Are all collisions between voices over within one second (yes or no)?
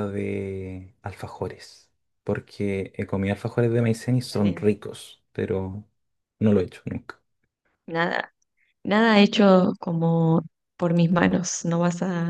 yes